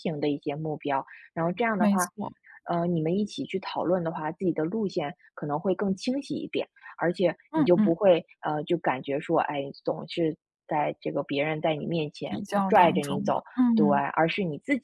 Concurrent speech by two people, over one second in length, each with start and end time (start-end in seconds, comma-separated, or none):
12.2-14.1